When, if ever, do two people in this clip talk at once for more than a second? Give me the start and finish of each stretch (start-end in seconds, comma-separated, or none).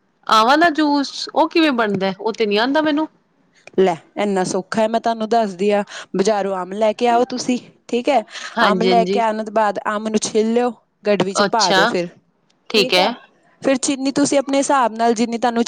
none